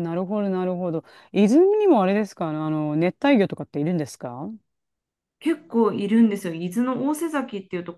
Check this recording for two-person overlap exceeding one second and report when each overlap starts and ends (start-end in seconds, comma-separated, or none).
none